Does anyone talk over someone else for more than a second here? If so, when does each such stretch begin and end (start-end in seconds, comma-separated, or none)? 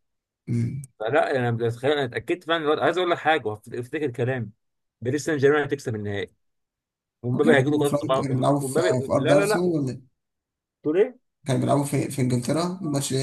7.4-9.8